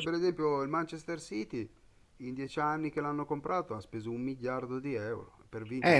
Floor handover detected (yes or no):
yes